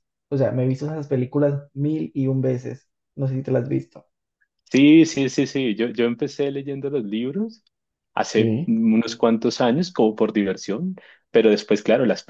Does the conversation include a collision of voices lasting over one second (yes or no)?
no